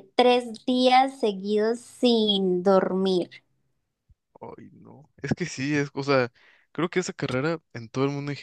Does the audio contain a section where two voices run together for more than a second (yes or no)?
no